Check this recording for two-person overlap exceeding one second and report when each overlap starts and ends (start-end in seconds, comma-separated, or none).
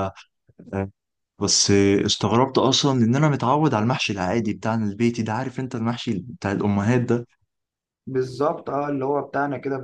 none